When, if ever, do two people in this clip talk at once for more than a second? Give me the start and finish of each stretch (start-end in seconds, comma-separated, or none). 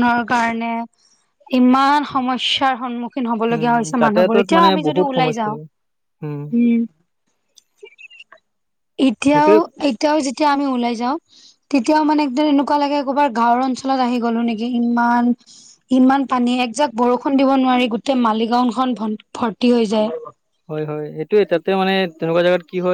3.5-5.5